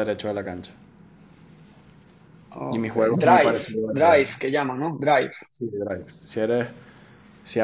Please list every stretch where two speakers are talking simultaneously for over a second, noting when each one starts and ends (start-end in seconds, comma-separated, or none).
2.7-4.2